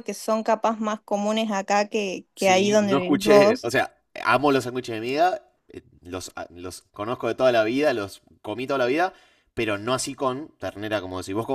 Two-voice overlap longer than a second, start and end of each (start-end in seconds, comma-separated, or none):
2.3-3.7